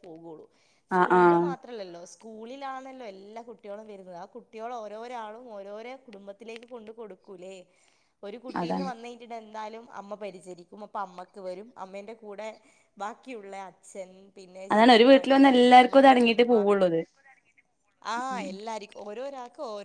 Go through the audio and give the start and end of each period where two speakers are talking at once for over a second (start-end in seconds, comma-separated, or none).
14.7-16.6